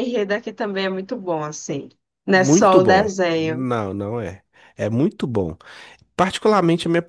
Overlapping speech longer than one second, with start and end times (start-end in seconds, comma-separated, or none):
2.3-3.7